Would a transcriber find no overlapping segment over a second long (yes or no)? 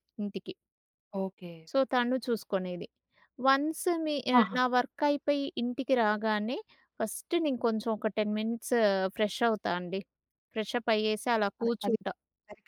yes